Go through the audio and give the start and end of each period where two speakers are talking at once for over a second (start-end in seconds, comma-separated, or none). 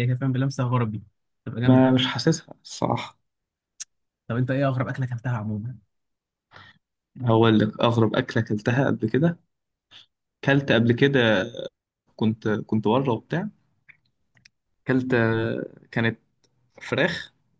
none